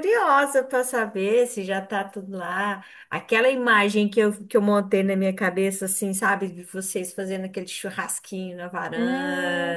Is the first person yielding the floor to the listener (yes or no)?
yes